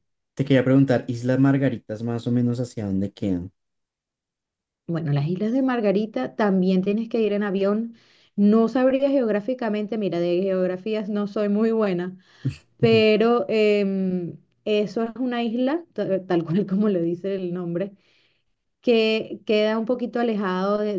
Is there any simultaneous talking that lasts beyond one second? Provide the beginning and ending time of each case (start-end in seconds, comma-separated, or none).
none